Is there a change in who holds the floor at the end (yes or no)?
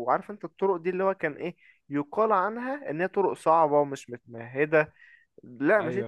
no